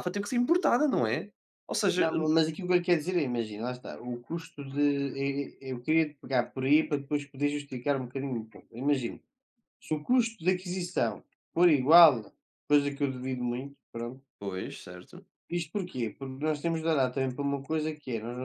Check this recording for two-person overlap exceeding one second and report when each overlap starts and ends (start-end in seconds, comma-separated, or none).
none